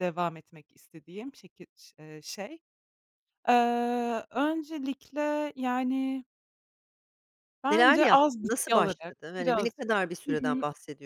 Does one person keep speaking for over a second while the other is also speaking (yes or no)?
yes